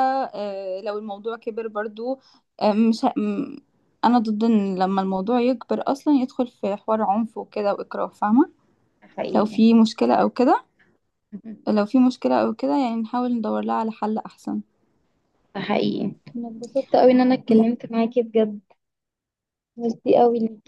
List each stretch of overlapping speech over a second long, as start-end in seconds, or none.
none